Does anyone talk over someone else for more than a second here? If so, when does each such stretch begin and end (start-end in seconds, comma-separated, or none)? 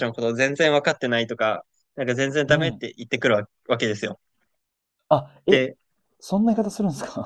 none